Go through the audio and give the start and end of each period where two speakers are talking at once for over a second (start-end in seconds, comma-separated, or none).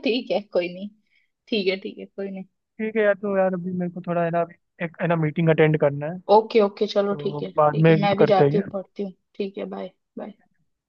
6.9-8.6